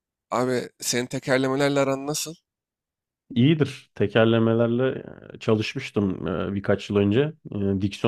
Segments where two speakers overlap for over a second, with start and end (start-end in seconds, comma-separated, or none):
none